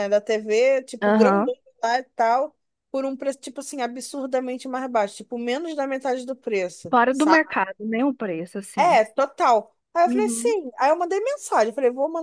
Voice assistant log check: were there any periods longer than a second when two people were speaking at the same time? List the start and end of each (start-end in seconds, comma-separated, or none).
none